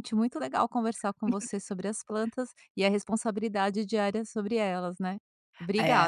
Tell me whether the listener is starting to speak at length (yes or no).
yes